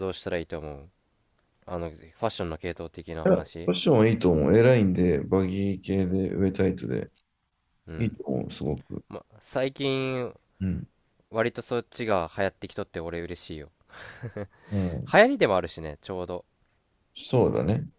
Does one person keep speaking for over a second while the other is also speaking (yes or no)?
no